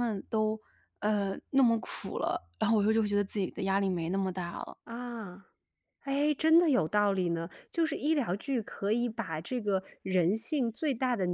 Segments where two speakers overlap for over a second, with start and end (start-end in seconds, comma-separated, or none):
none